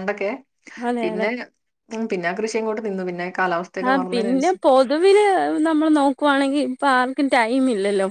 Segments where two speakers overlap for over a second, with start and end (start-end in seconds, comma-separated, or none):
none